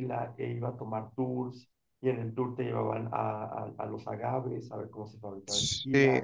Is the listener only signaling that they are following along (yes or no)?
yes